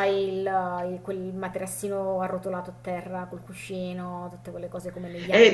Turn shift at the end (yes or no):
yes